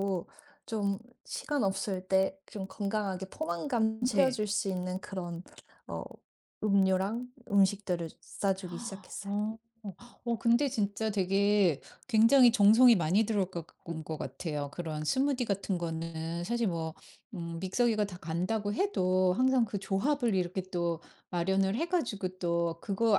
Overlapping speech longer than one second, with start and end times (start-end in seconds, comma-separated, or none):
none